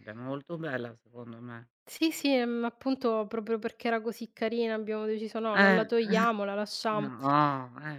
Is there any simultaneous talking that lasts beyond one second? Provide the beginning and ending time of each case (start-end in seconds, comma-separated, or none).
none